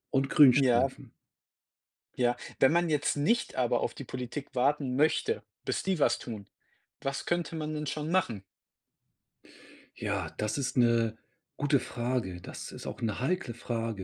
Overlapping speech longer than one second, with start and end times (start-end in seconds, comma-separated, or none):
none